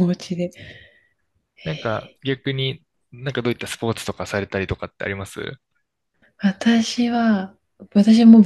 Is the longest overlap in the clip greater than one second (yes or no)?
no